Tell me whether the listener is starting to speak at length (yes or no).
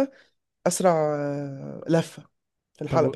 yes